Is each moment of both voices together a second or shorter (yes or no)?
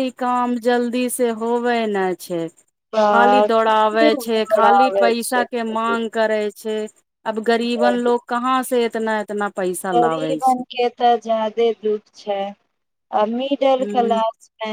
no